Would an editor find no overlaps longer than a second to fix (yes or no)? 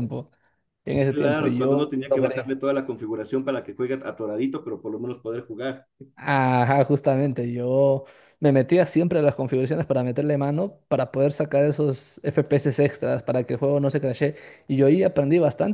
no